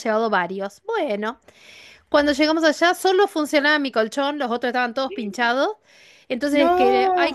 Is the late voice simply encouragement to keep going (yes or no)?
yes